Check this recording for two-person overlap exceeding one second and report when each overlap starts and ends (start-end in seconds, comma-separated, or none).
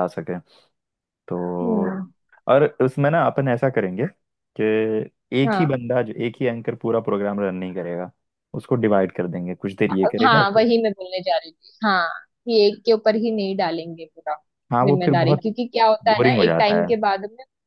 14.8-16.9